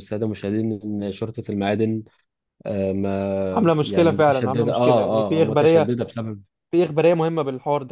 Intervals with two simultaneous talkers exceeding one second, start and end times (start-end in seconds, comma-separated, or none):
3.5-6.0